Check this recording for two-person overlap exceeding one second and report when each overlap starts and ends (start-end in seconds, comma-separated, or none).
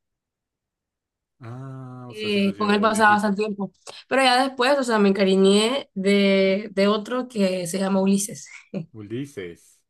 2.1-3.4